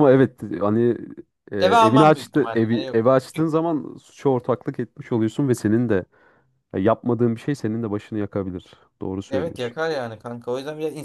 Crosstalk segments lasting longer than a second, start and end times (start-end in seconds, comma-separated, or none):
1.6-3.5